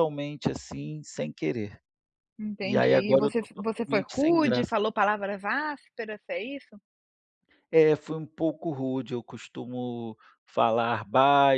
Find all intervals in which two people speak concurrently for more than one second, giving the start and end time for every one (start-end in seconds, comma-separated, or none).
2.6-4.7